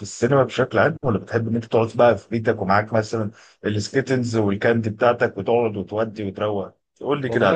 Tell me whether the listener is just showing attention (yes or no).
no